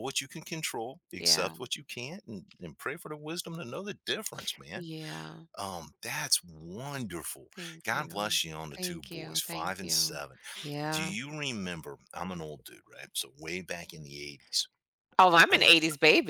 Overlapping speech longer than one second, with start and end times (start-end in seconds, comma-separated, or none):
8.8-10.2